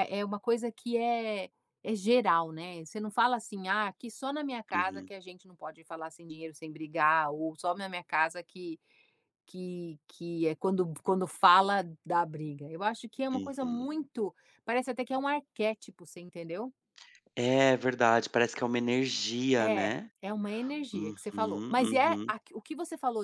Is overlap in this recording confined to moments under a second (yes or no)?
no